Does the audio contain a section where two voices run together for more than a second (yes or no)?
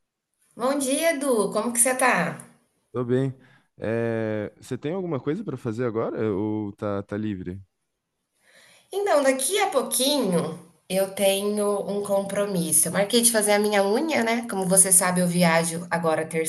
no